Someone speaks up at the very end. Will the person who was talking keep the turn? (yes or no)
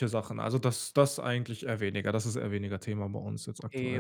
no